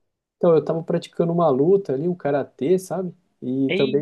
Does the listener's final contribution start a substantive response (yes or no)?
no